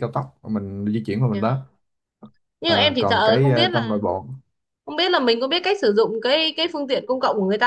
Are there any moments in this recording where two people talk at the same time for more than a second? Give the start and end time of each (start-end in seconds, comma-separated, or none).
2.6-4.0